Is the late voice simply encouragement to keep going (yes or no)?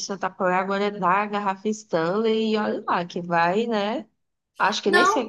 no